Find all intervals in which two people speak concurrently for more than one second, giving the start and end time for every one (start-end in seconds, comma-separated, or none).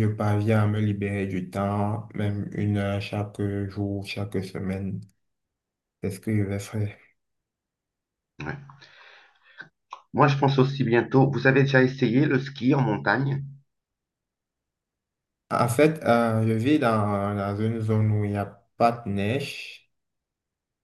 none